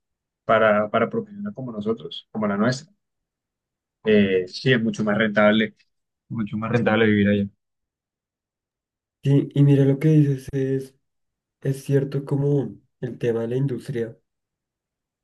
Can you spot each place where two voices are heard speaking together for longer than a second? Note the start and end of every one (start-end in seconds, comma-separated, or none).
none